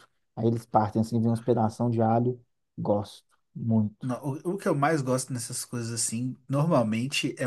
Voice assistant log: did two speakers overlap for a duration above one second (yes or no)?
no